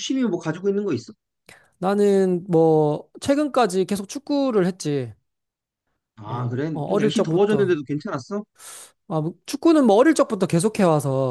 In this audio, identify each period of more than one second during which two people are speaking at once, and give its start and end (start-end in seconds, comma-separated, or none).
6.2-7.8